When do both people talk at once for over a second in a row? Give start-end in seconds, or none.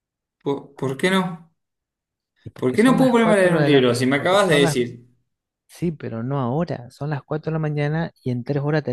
2.6-4.8